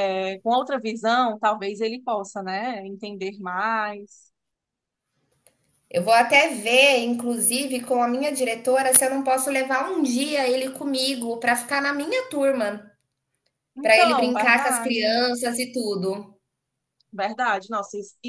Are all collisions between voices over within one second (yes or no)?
no